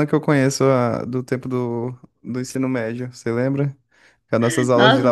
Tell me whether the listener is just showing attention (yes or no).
no